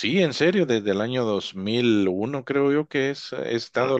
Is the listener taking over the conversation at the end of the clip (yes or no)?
yes